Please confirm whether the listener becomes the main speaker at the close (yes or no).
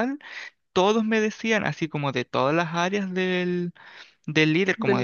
no